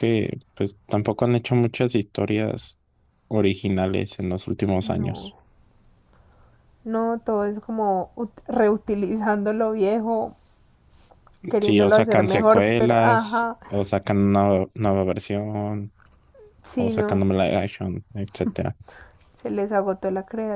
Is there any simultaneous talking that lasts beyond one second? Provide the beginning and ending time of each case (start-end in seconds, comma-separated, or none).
11.6-13.6